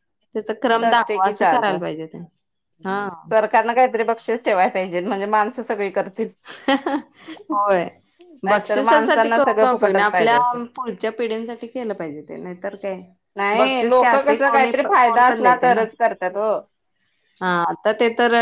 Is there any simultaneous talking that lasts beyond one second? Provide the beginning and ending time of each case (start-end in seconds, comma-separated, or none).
8.5-10.4, 13.6-15.8